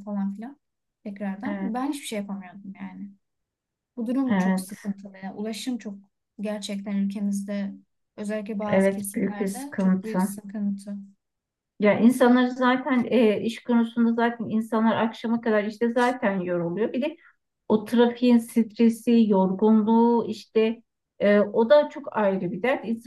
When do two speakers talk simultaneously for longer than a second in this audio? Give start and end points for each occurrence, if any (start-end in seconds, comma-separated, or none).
8.7-10.2